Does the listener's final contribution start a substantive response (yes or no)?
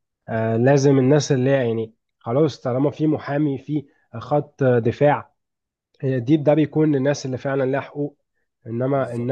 no